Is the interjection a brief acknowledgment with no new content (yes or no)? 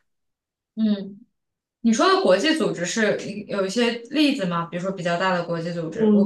no